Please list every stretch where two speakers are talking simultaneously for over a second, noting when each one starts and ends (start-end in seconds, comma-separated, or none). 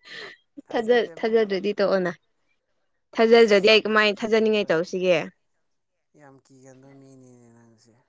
3.4-4.7